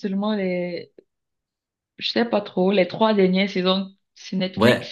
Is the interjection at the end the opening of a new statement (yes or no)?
yes